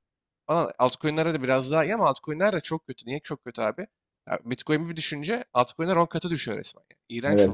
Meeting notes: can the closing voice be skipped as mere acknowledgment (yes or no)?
no